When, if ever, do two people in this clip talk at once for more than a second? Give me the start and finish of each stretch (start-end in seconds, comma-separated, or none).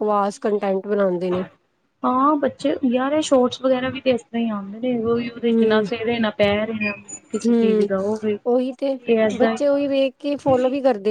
none